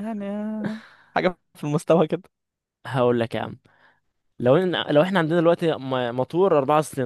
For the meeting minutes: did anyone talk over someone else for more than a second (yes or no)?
no